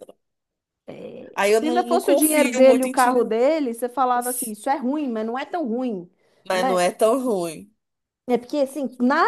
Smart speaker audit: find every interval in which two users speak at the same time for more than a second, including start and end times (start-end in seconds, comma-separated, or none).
1.5-3.4